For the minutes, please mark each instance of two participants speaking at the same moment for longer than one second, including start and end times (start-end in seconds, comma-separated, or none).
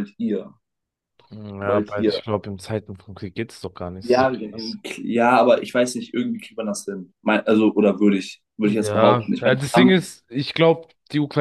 8.6-10.0